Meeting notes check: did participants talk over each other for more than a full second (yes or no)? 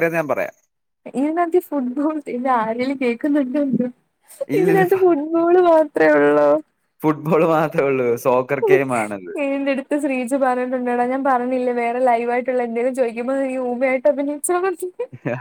no